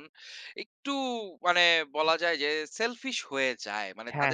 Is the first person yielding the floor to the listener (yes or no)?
no